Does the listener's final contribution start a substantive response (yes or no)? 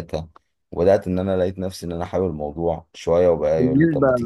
yes